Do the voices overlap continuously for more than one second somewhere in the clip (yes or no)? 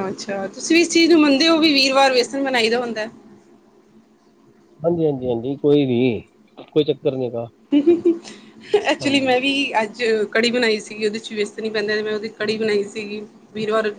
no